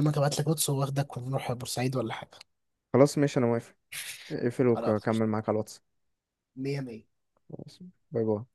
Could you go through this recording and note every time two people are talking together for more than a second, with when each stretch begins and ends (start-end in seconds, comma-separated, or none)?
none